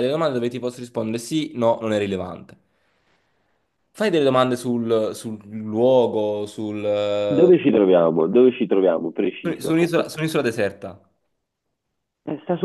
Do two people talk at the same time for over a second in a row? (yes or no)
no